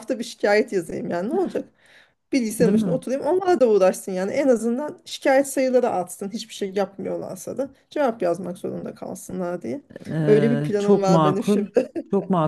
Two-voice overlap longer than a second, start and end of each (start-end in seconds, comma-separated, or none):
10.3-11.7